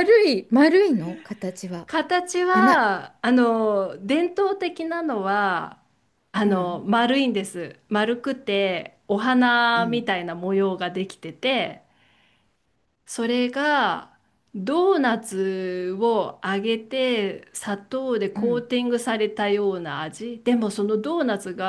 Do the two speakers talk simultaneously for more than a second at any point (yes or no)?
no